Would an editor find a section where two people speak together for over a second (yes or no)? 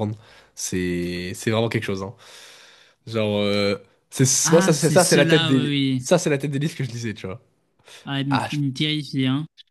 yes